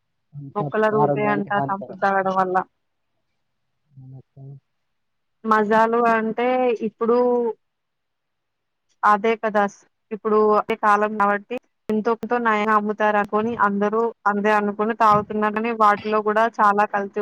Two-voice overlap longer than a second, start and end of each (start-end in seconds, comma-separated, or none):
0.6-2.0